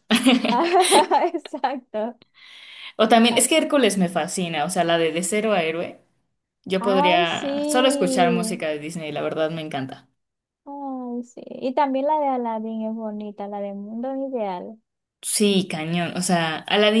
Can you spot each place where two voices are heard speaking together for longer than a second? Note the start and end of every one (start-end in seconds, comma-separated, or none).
7.0-8.6